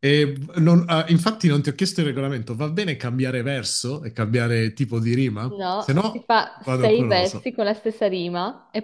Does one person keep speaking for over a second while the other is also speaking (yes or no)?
yes